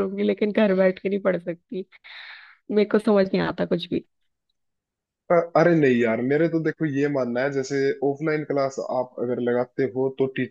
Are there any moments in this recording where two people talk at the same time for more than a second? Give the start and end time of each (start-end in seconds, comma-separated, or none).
none